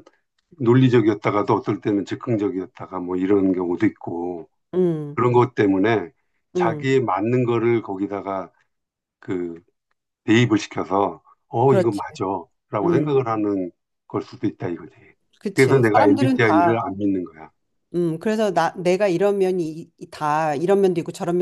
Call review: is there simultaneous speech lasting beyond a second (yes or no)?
yes